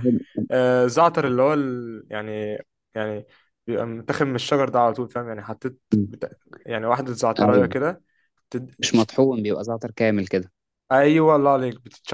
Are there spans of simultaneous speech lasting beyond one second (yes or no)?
no